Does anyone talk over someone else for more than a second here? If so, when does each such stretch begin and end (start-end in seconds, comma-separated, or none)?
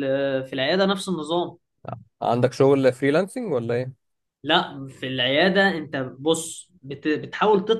none